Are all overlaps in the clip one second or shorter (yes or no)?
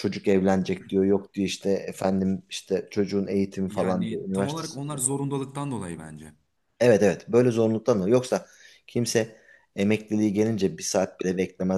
no